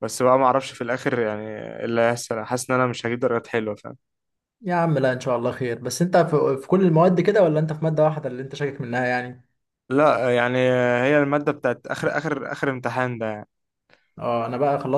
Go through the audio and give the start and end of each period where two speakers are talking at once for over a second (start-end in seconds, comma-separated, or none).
none